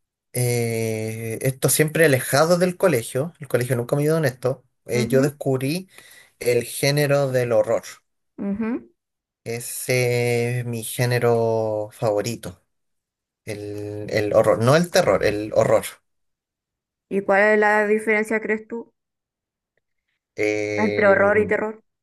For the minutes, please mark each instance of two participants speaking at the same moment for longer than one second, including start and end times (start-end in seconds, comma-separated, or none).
none